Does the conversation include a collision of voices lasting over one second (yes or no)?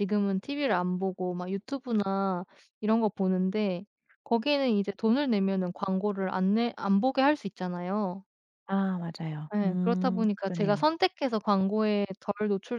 yes